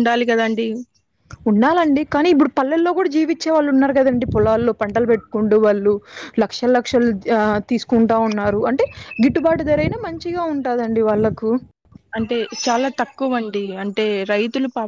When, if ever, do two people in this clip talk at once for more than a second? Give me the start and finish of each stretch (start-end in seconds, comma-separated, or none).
none